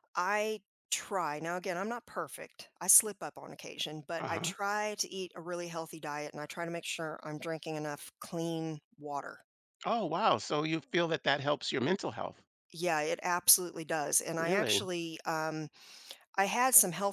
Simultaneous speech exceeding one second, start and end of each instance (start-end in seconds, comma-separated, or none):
none